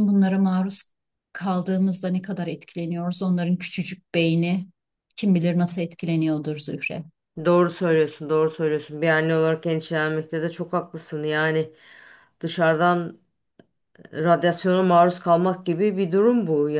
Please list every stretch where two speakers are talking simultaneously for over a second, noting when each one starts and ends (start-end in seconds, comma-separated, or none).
none